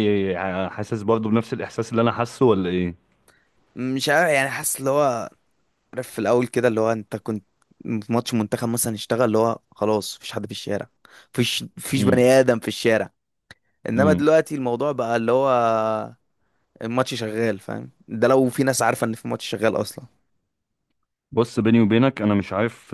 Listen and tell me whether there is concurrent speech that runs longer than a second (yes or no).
no